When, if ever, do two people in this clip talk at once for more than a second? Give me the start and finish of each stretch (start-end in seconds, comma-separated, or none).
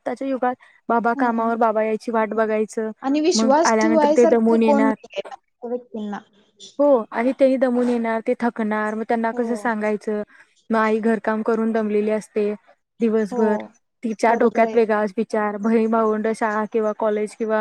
3.4-4.9